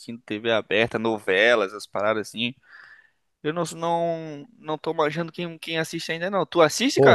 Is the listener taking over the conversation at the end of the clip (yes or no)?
yes